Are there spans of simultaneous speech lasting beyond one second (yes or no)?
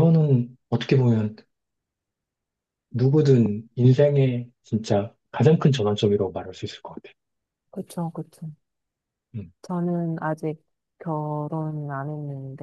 no